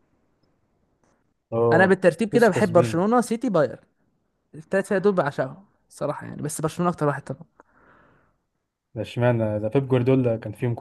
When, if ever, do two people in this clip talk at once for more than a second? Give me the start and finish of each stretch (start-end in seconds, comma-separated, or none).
1.7-3.0